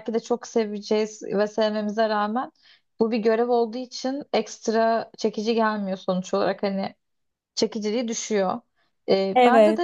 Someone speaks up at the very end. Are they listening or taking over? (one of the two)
listening